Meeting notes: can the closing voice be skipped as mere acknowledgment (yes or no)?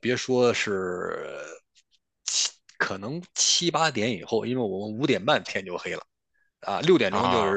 yes